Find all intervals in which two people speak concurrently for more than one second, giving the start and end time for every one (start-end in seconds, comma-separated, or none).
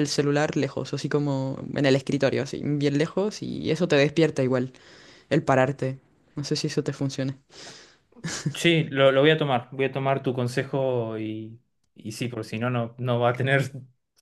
none